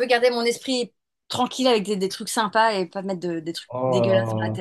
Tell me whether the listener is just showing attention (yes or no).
no